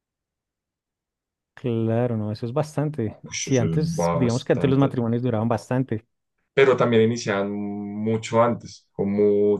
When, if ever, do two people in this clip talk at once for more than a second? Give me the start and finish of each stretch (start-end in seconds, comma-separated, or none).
3.3-5.0